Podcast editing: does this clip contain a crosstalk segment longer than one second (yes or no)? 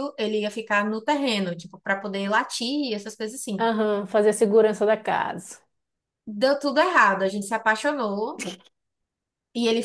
no